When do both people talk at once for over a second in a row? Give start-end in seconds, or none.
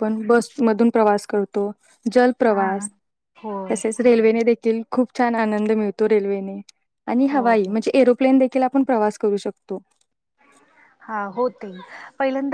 none